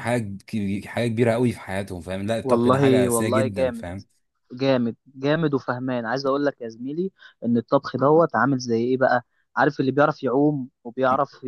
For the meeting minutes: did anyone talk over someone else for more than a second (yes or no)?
yes